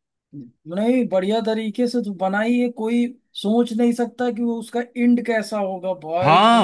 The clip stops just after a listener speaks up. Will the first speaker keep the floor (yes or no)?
no